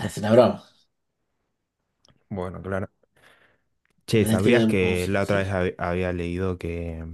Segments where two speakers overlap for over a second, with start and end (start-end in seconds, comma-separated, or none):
4.1-5.6